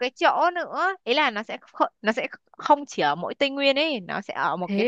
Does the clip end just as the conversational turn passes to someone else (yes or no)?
no